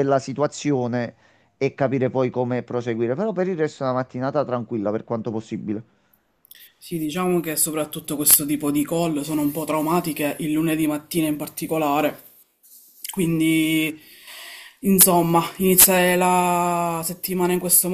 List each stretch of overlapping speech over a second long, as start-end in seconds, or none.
none